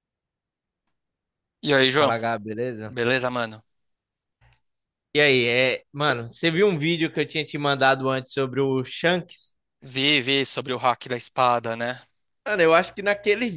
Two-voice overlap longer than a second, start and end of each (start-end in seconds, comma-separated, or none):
none